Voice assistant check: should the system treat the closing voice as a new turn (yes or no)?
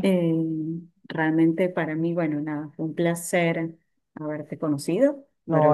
yes